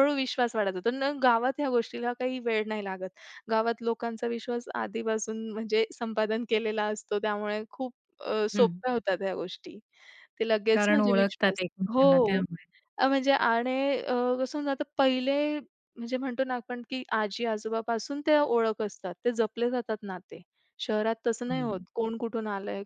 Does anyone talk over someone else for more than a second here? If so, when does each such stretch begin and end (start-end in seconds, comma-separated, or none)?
10.7-12.4